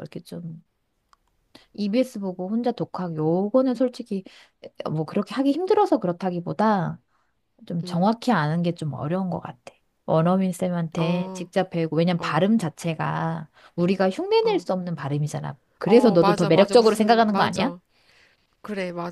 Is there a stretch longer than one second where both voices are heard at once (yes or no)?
yes